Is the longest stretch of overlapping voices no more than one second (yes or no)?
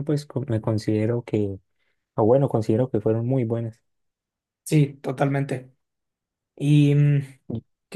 yes